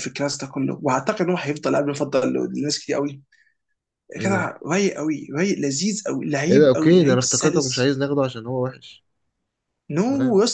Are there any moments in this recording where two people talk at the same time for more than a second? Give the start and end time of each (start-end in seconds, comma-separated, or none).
6.5-7.9